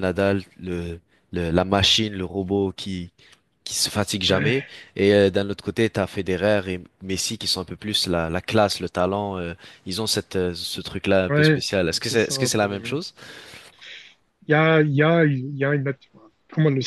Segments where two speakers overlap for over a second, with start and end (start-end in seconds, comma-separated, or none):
11.3-12.9